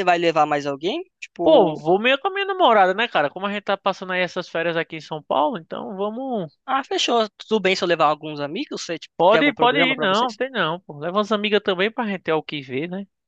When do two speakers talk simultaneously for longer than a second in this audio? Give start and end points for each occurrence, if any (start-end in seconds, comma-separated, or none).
9.2-10.4